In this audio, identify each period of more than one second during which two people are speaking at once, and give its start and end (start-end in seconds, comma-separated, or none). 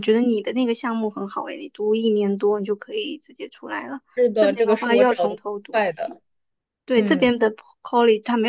4.1-6.2